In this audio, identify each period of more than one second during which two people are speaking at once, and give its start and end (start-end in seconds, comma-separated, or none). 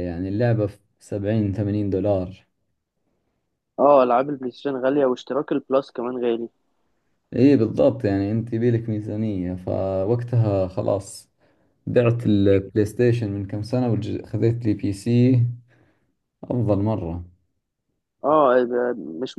none